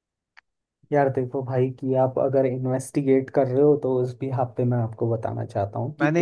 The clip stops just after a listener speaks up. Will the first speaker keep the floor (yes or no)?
no